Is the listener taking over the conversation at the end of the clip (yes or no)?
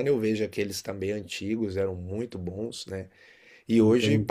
no